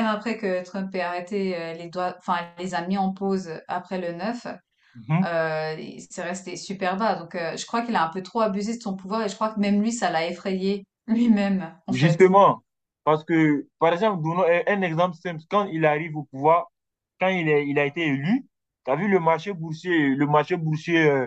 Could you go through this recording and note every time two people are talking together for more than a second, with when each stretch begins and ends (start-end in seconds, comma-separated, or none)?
none